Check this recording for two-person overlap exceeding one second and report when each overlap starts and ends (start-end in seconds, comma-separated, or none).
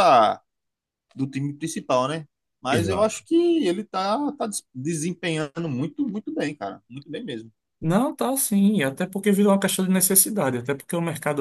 none